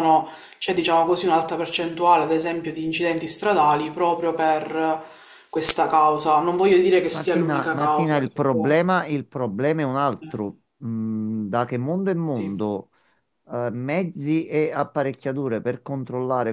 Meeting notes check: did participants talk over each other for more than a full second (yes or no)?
yes